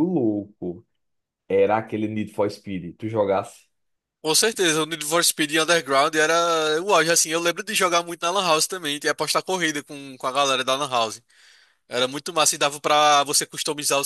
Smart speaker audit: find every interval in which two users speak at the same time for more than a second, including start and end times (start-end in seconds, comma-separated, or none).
none